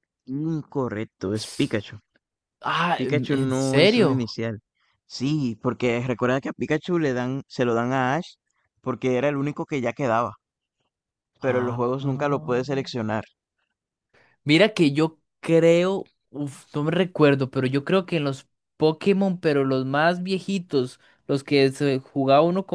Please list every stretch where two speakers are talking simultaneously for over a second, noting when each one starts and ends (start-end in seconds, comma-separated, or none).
3.0-4.4